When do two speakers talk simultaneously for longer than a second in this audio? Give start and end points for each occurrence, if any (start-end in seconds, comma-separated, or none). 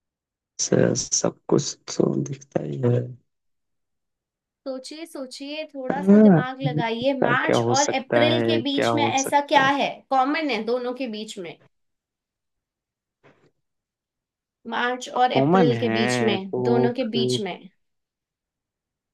7.0-9.7, 15.2-16.9